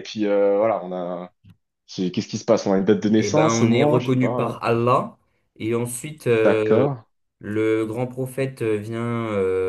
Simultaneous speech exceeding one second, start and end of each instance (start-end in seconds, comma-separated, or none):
3.2-4.6